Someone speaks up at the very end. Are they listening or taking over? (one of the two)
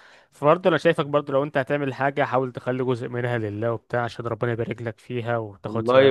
taking over